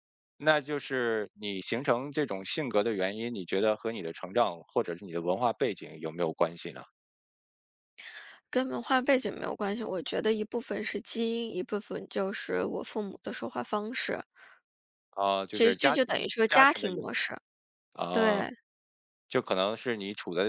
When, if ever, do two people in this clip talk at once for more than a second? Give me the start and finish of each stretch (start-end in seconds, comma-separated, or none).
15.5-17.1